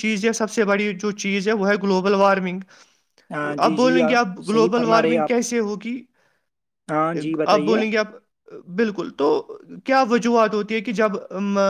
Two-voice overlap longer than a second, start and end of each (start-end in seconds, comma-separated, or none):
3.6-5.4